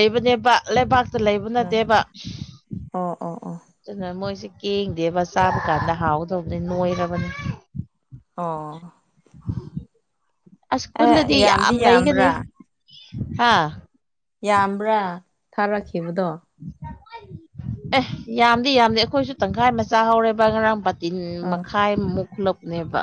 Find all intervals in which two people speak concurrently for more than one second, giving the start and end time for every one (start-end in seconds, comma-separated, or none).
11.0-12.3